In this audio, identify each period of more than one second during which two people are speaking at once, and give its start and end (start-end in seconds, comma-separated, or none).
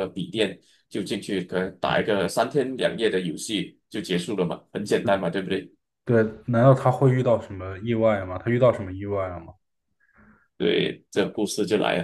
none